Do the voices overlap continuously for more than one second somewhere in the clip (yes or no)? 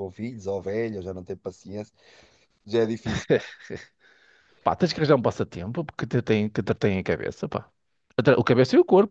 no